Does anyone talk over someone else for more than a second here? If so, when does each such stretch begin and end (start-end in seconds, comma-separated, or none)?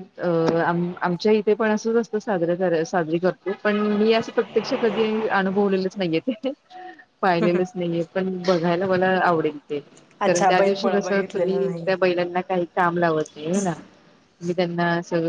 10.3-11.9